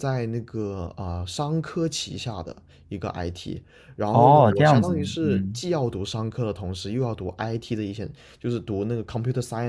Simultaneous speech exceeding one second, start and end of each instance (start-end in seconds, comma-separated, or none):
4.1-5.6